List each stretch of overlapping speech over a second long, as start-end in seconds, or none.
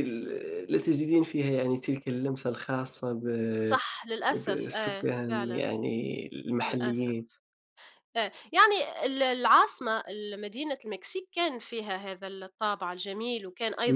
4.3-5.7